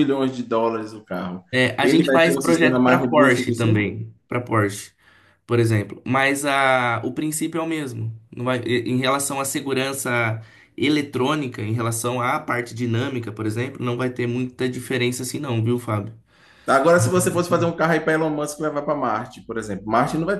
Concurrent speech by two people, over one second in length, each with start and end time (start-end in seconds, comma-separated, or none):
1.8-3.8